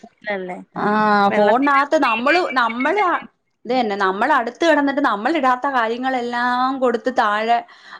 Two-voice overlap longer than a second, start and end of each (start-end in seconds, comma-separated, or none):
1.3-3.0